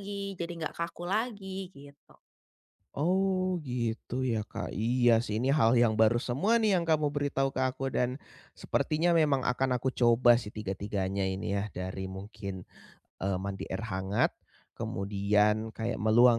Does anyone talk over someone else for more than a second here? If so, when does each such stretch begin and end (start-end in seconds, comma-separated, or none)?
none